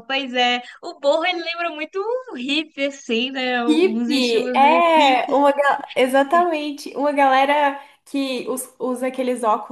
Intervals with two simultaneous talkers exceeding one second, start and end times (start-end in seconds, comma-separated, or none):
3.7-5.2